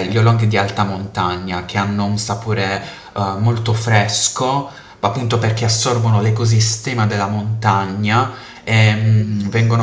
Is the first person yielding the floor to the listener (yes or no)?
no